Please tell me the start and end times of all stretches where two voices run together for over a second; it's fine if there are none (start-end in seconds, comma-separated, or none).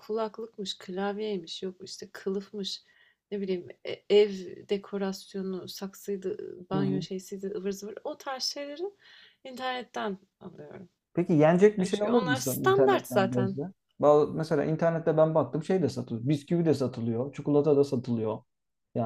11.8-13.6